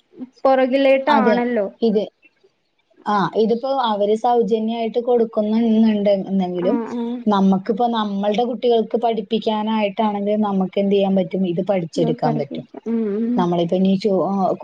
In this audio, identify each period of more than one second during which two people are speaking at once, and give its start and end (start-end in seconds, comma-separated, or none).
none